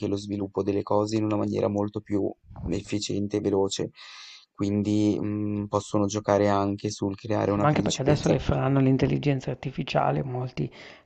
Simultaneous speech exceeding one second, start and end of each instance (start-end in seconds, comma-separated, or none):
7.4-8.8